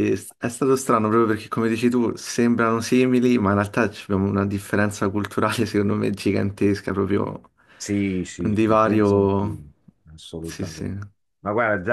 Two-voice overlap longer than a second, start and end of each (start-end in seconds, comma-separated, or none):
8.4-9.6